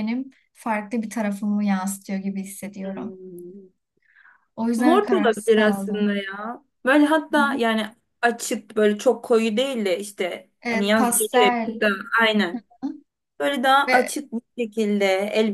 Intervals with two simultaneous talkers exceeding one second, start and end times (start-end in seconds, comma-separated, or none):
4.8-6.2, 10.6-11.8